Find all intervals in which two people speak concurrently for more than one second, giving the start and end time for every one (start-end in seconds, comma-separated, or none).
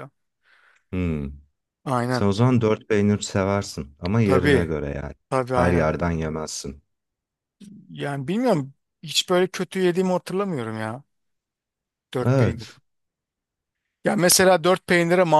none